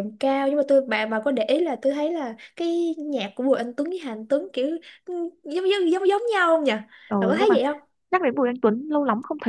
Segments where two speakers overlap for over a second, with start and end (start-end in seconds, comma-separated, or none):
none